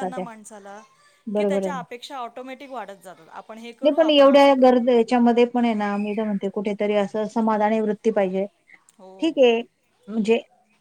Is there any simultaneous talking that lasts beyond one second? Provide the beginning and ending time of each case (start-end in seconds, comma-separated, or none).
none